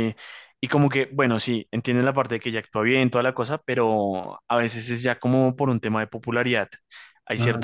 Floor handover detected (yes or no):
no